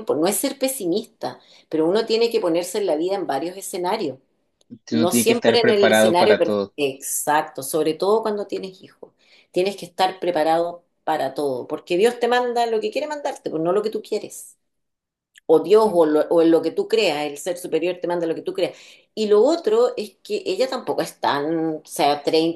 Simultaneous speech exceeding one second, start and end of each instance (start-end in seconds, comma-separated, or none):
4.9-6.8